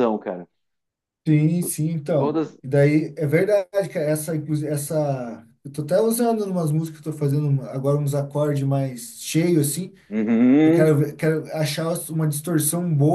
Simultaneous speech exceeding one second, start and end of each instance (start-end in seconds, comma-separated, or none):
none